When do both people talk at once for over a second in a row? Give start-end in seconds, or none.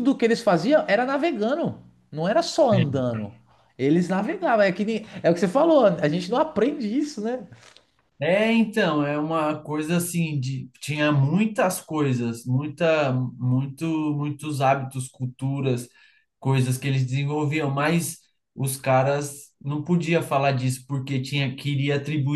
none